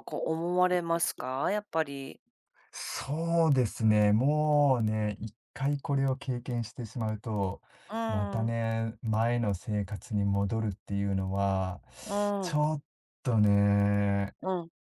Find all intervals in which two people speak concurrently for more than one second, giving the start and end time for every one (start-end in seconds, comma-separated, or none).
none